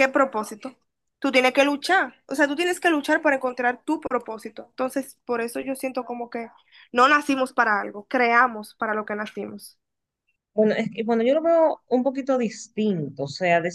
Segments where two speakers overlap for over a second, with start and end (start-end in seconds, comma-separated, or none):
none